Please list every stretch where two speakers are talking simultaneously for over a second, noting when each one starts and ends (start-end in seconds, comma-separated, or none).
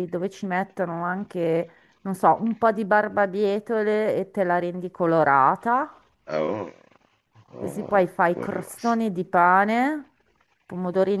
7.6-9.0